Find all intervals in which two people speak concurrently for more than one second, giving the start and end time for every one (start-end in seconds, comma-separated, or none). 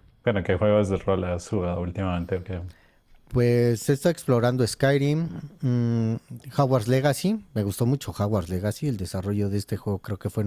none